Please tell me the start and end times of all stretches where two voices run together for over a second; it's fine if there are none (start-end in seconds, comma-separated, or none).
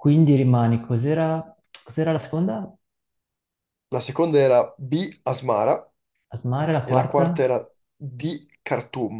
none